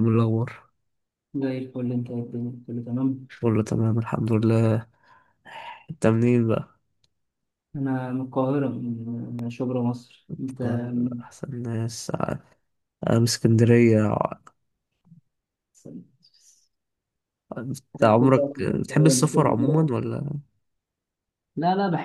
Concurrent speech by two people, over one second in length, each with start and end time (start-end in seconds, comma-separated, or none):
18.0-19.8